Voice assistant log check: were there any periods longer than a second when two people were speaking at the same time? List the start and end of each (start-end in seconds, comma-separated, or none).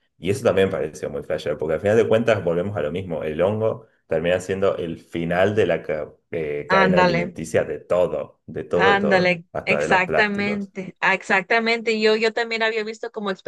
8.7-10.7